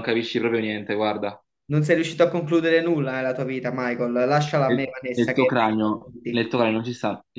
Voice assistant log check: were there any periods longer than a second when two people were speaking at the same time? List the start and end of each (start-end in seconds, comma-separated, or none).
4.6-6.5